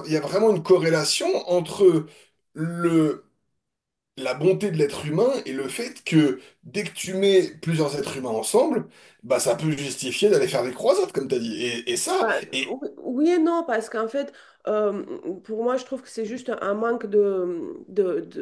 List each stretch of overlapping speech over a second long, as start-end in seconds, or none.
none